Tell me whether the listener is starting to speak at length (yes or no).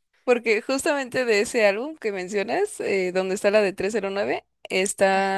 no